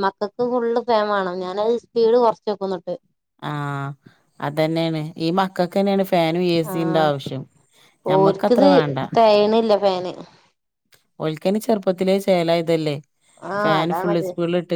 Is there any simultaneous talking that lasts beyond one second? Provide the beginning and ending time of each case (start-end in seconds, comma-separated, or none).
none